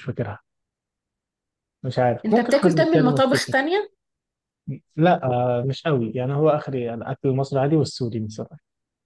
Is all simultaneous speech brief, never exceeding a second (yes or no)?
no